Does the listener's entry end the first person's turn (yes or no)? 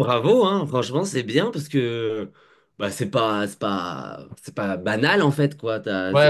yes